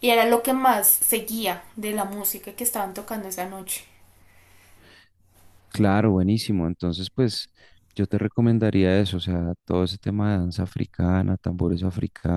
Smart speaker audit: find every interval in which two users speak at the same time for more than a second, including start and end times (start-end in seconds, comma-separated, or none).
none